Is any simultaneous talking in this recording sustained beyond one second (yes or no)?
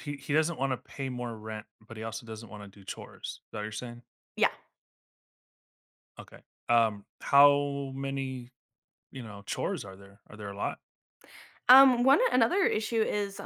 no